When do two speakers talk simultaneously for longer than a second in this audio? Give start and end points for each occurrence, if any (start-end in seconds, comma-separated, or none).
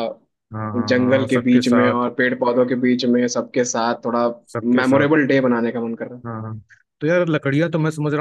0.8-2.1